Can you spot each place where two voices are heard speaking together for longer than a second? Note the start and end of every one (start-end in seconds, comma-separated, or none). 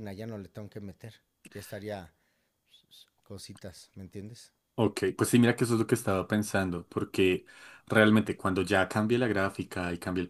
none